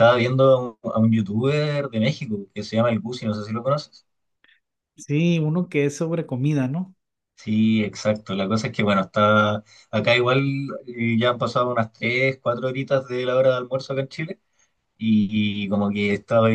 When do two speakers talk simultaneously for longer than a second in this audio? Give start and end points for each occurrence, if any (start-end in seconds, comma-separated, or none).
none